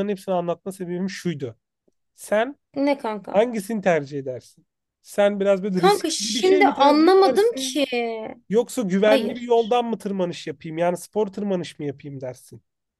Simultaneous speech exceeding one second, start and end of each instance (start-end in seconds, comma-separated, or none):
5.8-7.8